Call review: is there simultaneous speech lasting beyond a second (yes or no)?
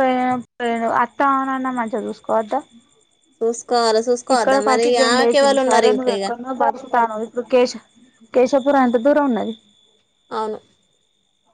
yes